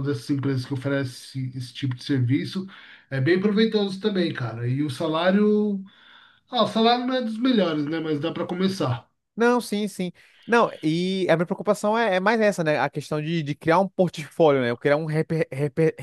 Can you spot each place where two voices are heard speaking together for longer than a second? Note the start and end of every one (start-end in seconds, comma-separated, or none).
none